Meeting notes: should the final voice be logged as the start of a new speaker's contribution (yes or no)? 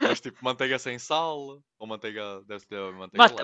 yes